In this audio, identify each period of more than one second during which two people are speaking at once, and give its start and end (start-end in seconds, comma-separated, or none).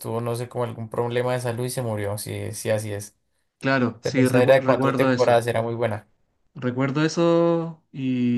4.0-5.5